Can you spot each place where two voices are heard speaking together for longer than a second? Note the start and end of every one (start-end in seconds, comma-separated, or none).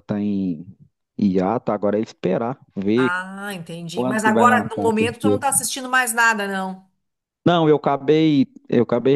4.0-5.4